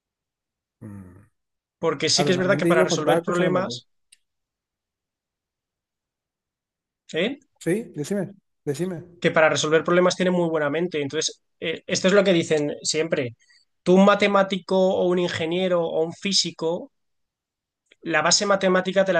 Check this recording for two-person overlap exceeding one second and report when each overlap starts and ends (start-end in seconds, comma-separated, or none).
2.1-3.8